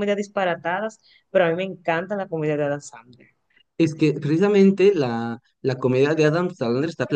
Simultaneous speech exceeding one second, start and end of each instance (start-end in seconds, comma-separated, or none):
none